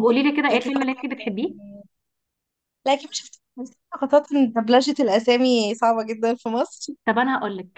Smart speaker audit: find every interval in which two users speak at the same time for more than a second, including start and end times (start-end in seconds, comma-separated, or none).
0.5-1.7